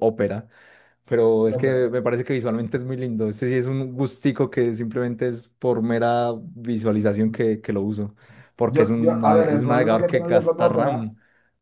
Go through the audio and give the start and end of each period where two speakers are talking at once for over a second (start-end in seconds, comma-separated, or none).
8.7-11.1